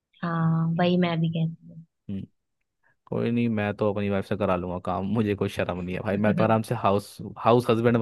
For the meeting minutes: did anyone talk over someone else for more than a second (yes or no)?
no